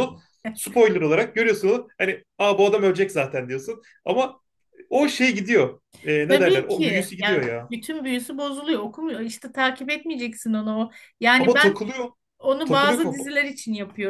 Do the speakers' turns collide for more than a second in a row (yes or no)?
yes